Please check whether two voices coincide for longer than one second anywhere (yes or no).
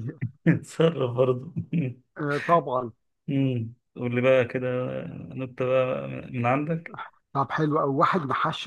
no